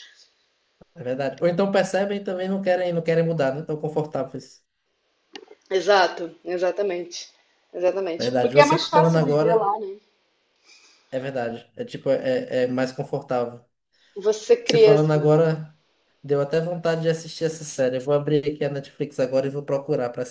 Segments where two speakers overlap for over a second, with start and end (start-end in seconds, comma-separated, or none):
8.2-9.7